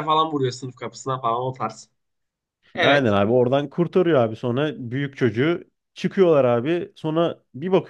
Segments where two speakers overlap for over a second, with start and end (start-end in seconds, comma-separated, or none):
none